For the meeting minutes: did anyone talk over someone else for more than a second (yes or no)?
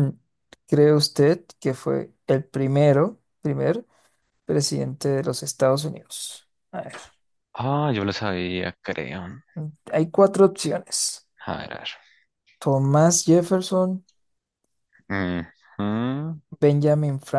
no